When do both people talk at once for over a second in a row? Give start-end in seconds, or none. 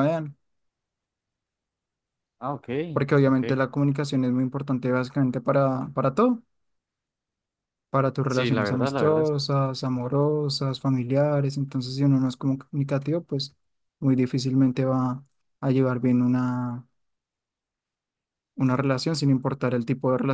8.3-9.6